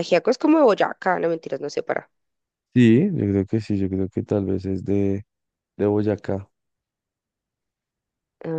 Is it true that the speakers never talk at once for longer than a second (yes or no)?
yes